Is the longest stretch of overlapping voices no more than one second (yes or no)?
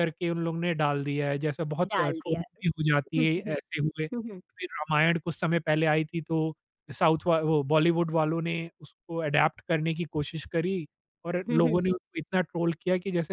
yes